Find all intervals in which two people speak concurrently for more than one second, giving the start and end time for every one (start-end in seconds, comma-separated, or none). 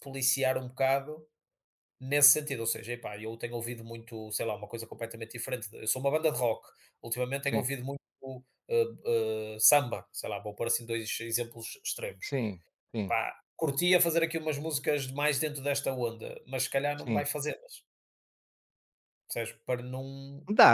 none